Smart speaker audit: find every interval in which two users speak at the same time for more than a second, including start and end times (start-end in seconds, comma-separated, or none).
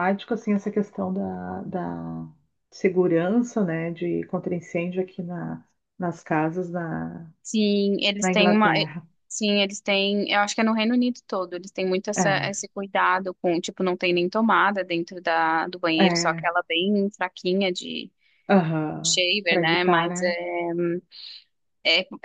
19.0-20.4